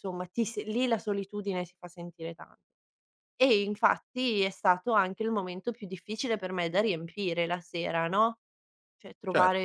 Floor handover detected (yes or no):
no